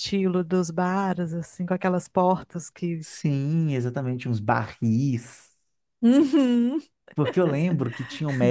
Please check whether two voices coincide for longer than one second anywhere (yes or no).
no